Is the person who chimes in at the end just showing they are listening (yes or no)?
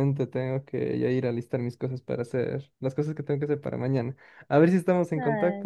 no